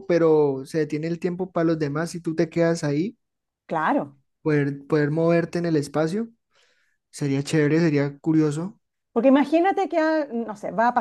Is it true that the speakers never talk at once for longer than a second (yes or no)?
yes